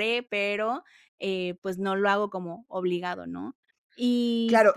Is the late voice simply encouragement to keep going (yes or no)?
no